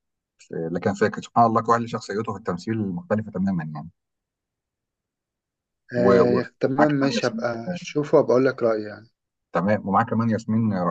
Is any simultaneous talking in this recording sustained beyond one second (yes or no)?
yes